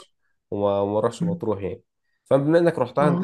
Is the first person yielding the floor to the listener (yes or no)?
no